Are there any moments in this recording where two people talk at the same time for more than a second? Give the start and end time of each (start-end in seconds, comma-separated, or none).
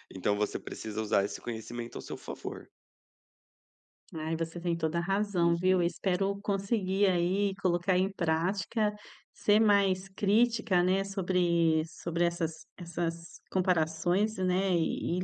none